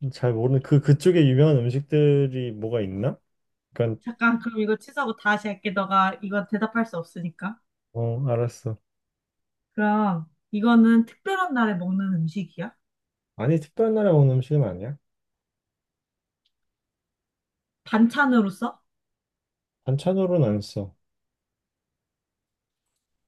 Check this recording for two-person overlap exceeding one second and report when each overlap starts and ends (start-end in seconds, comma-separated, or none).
none